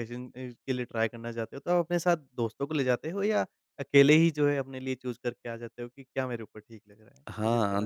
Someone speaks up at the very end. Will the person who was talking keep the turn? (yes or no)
no